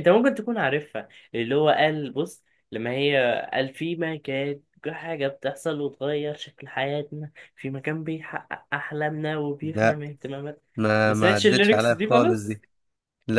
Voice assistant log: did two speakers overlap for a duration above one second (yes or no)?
yes